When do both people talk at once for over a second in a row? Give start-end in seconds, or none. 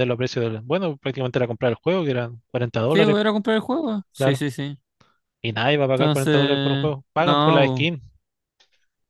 5.9-7.9